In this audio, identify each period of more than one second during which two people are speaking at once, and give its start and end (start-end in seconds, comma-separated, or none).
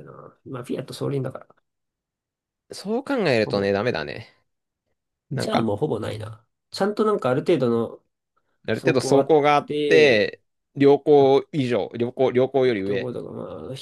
8.7-10.3